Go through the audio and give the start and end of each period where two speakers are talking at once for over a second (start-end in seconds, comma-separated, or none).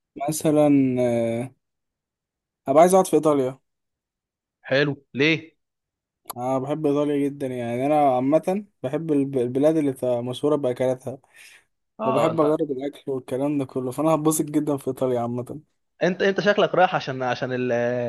none